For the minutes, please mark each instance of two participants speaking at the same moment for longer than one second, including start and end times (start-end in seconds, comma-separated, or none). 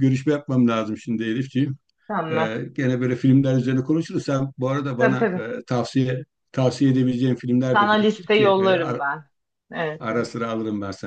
7.7-9.0